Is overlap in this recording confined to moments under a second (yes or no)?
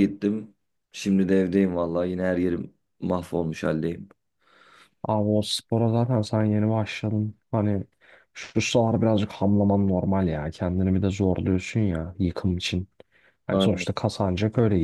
yes